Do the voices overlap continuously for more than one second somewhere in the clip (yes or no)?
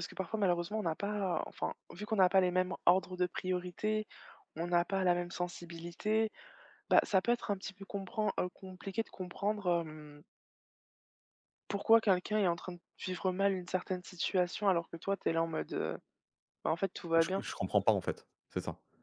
no